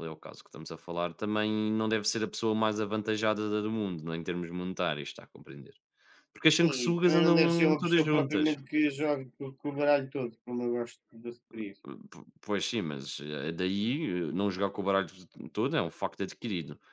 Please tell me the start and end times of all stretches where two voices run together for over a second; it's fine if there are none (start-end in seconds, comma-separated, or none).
6.7-8.6